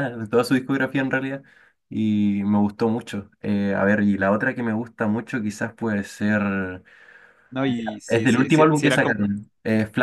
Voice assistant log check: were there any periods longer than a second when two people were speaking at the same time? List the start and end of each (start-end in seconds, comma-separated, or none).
8.1-9.3